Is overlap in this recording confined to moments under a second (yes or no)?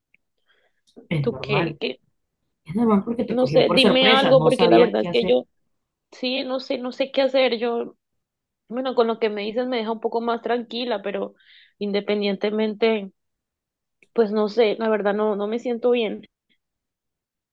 no